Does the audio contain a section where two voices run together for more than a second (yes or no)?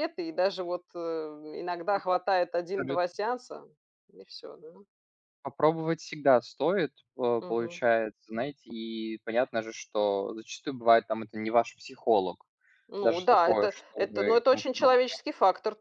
yes